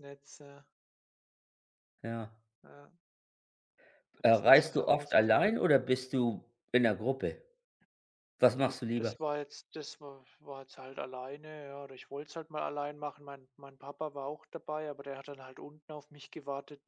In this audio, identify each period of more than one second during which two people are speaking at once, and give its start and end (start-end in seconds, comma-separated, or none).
4.2-5.5